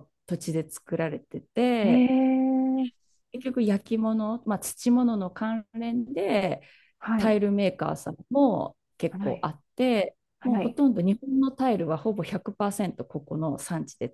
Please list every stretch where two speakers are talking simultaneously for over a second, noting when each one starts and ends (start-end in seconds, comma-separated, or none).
none